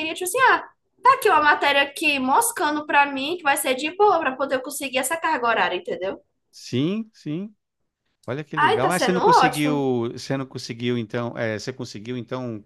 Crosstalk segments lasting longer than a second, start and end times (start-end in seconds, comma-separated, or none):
8.6-9.9